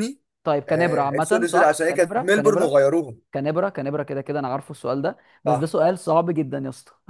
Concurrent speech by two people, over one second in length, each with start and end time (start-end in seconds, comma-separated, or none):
0.7-2.8